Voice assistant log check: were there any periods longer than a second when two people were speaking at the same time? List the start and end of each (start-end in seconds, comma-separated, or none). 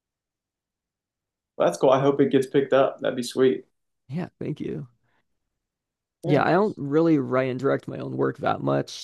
none